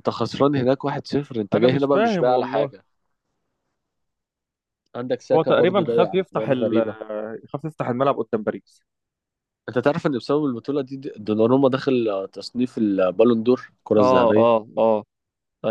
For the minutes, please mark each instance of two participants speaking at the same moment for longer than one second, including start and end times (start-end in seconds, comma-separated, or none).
1.5-2.7, 5.3-6.8